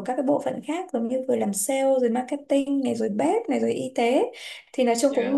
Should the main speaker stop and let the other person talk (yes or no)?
no